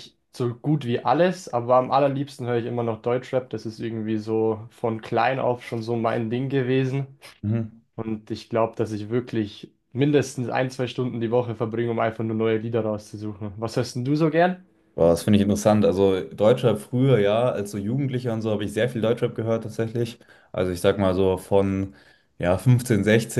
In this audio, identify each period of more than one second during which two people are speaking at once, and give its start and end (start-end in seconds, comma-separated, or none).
none